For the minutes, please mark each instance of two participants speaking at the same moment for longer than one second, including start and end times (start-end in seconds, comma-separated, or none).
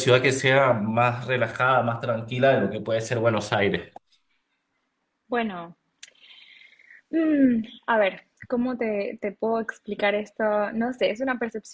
none